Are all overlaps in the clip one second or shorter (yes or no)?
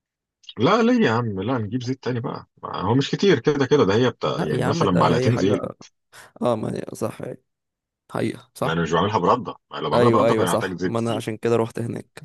no